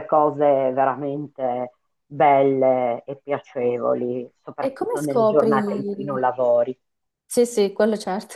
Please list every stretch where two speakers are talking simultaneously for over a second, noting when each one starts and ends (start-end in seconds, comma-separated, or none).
4.6-6.2